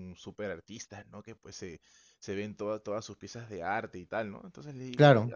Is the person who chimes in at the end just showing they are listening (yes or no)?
yes